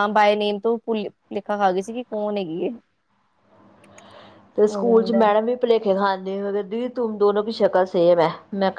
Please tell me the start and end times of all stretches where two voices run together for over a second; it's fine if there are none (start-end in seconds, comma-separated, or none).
none